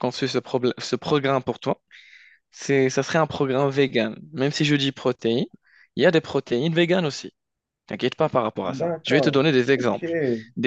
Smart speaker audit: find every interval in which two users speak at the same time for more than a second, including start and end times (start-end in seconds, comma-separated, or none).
8.7-10.1